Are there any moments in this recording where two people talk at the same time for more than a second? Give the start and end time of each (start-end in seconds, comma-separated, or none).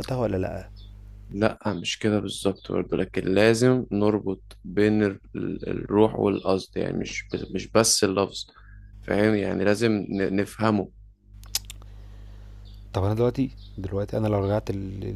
none